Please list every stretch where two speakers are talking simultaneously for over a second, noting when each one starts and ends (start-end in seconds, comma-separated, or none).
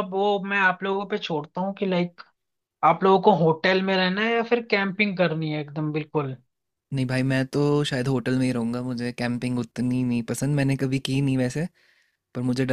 none